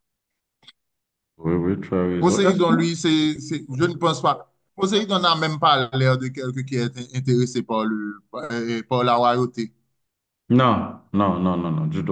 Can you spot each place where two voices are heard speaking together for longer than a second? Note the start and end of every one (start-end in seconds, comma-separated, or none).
none